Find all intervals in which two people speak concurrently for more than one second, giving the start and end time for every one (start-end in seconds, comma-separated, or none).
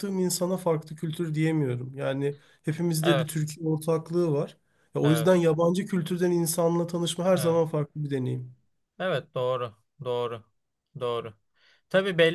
none